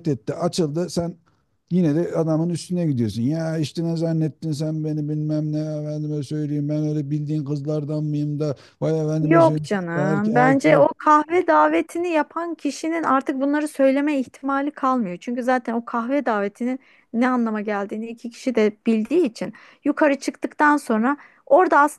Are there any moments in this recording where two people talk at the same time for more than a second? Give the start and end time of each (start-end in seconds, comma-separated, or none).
9.2-10.9